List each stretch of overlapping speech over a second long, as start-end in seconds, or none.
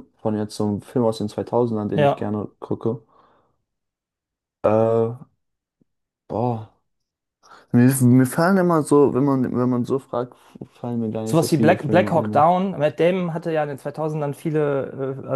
11.2-12.4